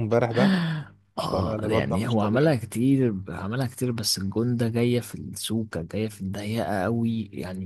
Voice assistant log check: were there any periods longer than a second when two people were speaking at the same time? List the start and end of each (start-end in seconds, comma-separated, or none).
1.2-2.6